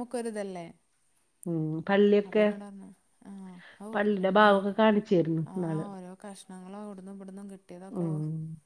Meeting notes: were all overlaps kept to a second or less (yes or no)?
yes